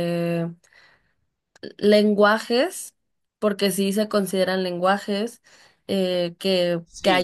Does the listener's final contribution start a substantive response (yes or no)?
yes